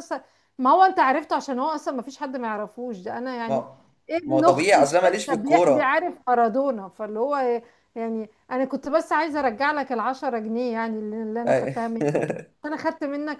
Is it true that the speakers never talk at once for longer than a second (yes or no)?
no